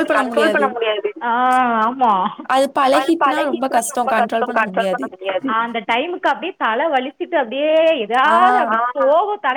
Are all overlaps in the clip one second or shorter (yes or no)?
yes